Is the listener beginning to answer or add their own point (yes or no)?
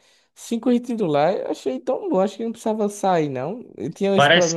yes